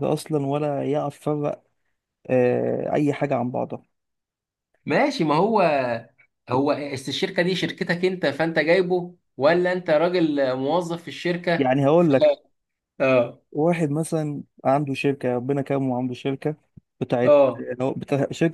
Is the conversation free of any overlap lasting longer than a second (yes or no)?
yes